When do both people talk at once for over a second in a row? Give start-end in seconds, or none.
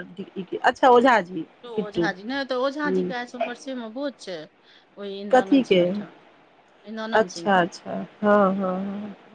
1.6-3.4